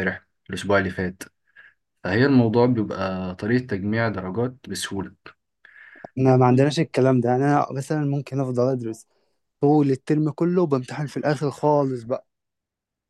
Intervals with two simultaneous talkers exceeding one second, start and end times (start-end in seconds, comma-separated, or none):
none